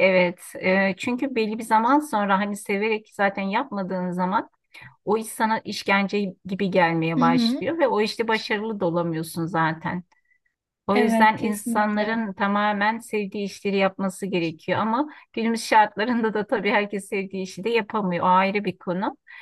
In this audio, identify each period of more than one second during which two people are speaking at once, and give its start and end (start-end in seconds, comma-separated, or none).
10.9-12.2